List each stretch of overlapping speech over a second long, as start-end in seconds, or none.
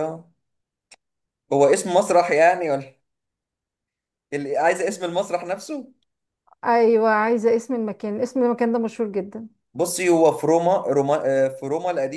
none